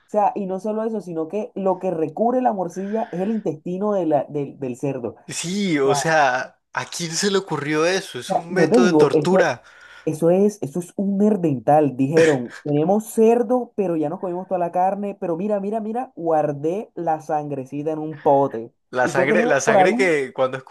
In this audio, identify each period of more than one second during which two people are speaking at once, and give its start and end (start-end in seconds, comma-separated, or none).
8.3-9.5, 18.9-20.1